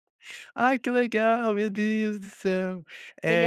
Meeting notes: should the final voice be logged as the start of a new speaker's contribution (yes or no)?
no